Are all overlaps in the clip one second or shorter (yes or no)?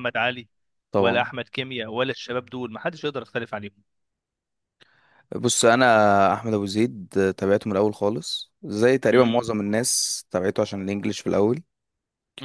yes